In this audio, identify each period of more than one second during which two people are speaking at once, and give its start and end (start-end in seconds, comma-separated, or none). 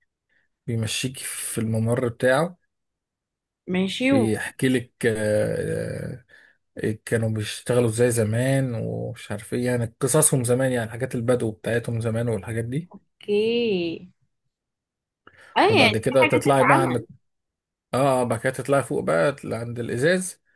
15.7-17.0